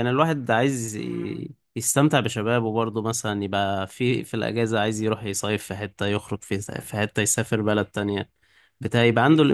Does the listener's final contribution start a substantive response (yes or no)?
no